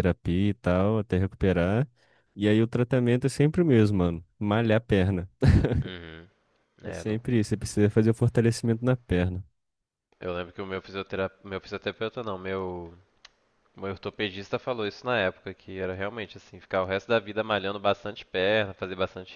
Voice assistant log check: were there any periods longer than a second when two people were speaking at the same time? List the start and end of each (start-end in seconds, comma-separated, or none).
none